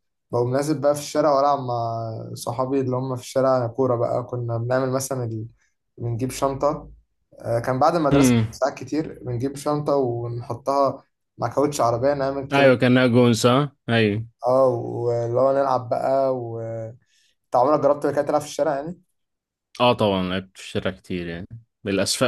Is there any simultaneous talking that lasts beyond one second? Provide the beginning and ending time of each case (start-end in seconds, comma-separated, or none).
none